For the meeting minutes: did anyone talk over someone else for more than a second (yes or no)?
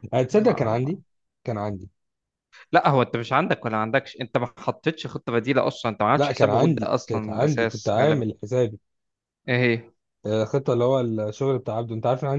yes